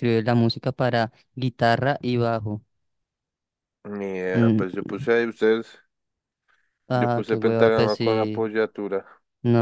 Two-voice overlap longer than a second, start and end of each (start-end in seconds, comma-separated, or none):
6.9-8.5